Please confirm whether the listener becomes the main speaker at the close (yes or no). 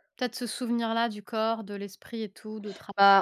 yes